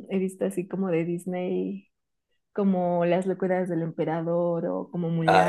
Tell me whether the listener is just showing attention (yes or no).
yes